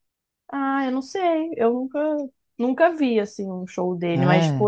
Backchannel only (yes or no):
yes